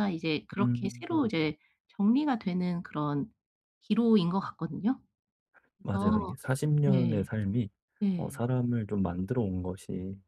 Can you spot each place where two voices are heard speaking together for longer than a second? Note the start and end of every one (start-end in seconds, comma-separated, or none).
none